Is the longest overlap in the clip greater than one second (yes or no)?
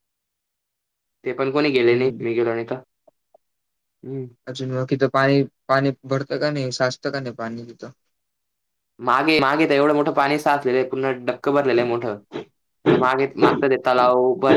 no